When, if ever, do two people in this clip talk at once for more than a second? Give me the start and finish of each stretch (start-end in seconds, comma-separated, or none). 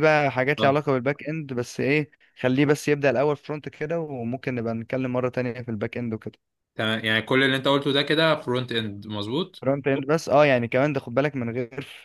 none